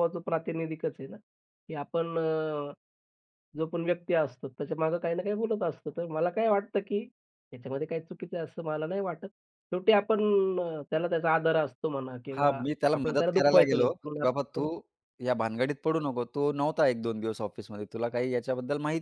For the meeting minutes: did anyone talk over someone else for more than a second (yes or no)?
yes